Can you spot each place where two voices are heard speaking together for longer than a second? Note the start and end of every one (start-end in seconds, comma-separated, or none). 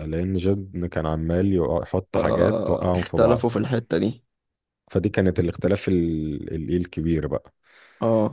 2.1-3.5